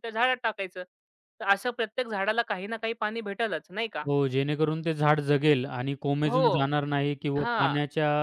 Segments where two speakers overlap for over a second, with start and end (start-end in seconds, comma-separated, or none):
none